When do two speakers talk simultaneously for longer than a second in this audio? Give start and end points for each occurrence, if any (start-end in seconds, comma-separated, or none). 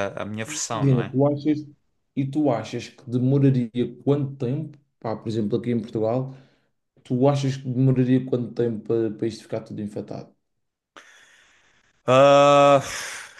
none